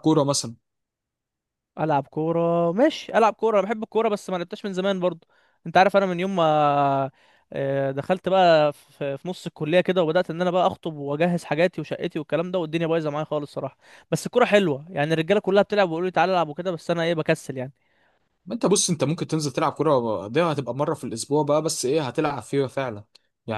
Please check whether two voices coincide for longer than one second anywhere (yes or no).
no